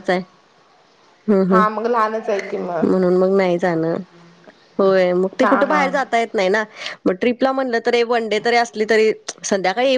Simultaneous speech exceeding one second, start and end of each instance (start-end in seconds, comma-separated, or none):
none